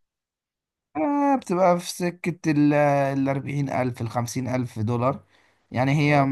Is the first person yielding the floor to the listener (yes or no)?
no